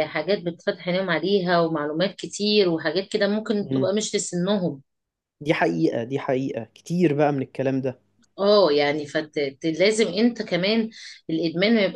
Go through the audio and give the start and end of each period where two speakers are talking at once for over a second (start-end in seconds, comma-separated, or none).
none